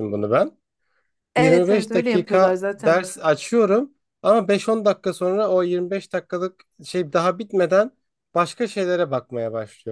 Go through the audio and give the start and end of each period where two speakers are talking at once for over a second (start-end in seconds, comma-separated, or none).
1.4-3.0